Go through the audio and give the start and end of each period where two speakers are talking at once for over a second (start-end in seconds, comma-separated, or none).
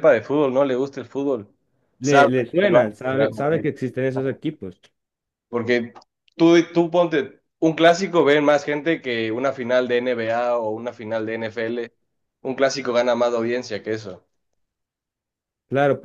2.0-3.6